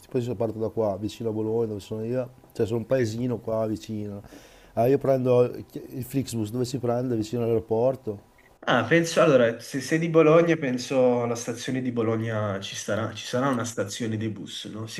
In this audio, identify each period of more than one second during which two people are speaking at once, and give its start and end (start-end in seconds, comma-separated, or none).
none